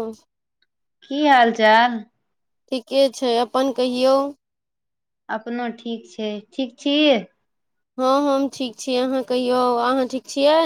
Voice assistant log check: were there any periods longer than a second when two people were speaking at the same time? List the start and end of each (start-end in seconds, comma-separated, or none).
none